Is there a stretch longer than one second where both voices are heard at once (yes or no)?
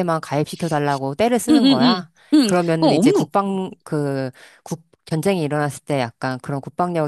yes